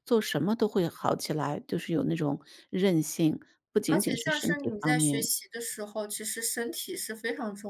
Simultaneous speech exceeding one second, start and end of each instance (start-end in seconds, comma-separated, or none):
3.9-5.3